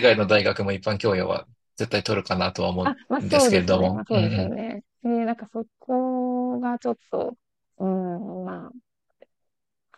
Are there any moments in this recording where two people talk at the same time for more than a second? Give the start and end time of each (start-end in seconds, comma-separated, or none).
2.8-4.5